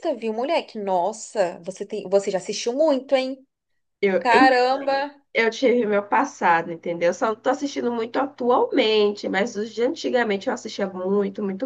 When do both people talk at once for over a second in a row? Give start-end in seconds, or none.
none